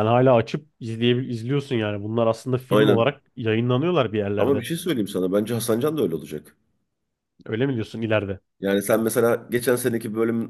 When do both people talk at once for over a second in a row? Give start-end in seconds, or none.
none